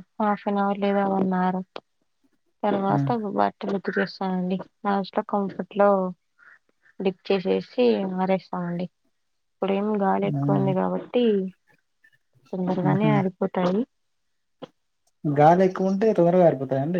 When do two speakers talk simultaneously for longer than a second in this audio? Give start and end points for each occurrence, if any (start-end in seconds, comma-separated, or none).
none